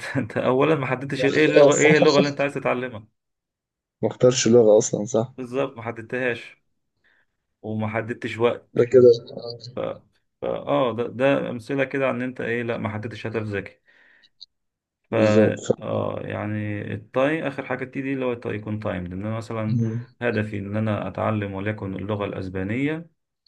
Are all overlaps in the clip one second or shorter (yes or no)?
no